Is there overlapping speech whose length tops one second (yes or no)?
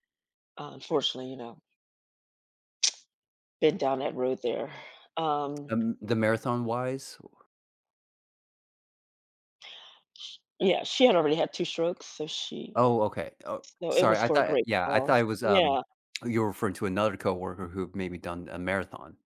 yes